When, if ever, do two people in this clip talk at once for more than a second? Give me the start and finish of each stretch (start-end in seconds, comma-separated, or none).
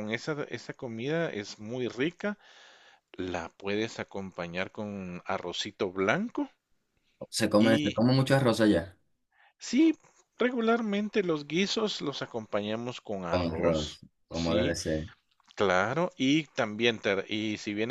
13.3-14.8